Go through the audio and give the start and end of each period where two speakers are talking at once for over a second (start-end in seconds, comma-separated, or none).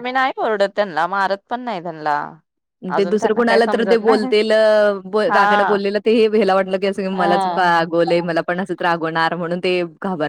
none